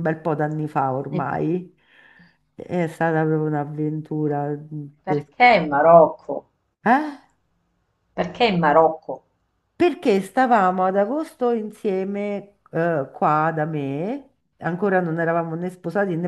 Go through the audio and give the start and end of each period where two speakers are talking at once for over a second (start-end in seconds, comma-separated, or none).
none